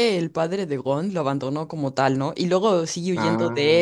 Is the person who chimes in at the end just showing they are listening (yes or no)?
yes